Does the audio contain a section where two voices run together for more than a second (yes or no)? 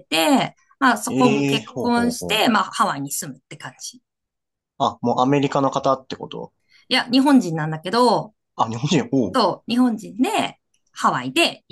yes